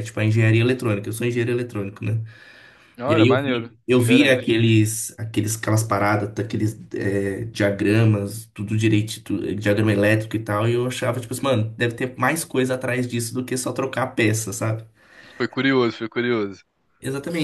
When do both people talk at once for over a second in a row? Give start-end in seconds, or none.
3.0-4.6